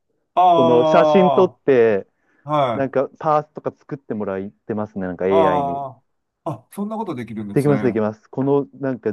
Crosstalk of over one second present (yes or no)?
no